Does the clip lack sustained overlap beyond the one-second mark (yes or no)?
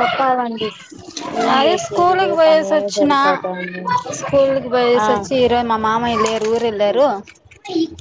yes